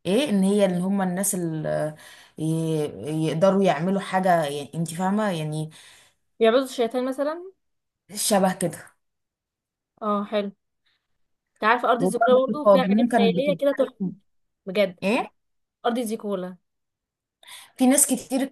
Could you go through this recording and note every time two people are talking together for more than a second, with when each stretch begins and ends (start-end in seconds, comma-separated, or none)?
12.0-14.1